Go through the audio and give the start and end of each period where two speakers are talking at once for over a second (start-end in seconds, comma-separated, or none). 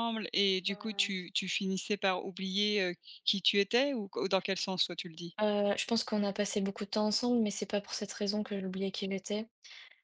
none